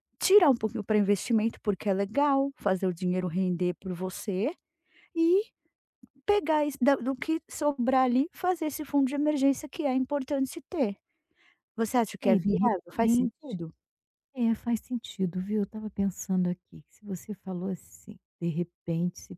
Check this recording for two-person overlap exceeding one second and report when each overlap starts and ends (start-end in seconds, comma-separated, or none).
12.2-13.6